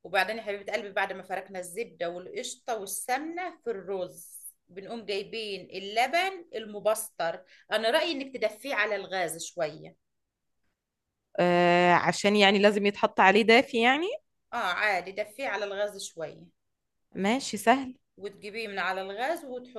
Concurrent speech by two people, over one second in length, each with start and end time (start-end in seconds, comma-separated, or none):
none